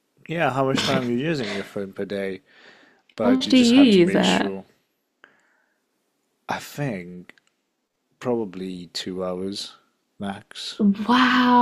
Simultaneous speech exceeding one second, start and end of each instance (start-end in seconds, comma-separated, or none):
3.2-4.5